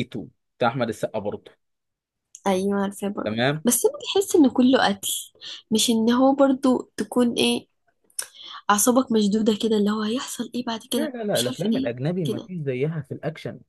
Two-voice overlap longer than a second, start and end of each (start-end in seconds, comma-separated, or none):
10.9-12.5